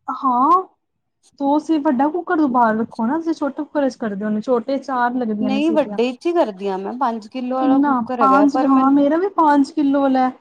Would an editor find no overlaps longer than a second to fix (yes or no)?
no